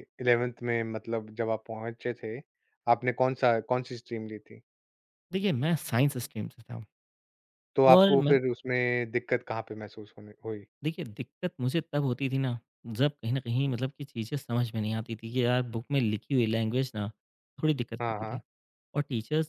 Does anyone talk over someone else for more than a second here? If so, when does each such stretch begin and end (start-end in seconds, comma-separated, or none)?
none